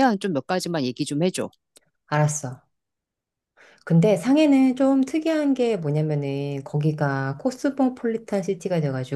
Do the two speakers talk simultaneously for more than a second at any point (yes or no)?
no